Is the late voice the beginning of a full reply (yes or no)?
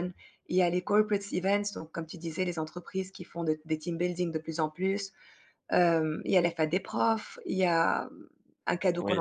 no